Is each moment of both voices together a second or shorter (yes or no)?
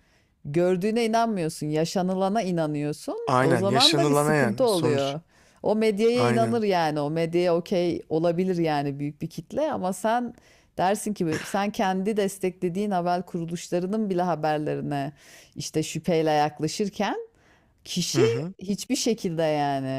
no